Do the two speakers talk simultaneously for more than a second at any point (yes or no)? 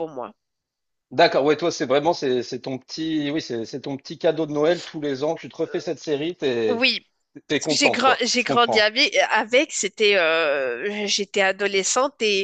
yes